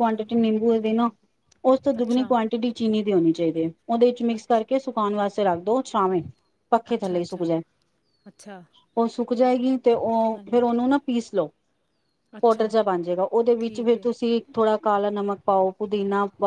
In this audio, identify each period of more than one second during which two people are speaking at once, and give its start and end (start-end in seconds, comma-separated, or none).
none